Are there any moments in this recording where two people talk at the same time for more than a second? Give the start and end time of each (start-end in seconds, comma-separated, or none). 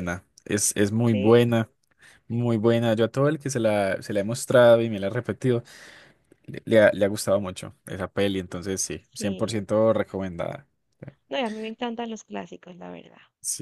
none